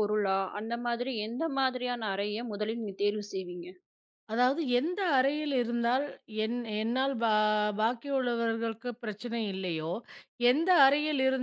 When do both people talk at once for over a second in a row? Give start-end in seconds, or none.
none